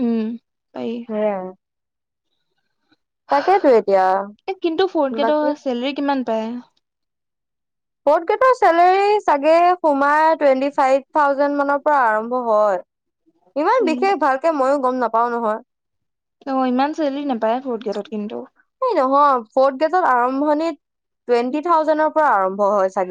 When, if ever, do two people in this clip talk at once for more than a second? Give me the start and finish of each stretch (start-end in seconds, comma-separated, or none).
none